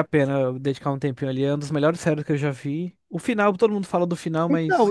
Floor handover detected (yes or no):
yes